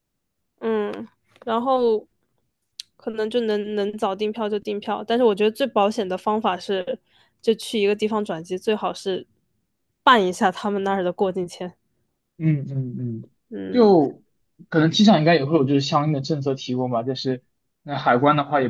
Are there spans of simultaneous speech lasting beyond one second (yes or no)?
no